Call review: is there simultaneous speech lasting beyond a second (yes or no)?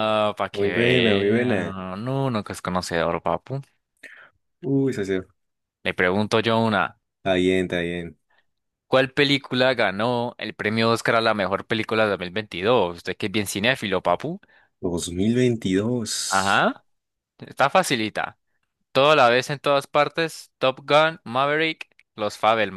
yes